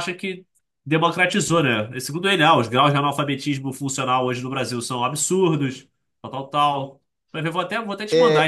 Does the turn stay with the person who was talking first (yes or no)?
no